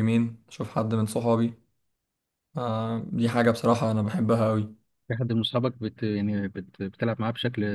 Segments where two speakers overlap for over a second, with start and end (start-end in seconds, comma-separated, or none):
none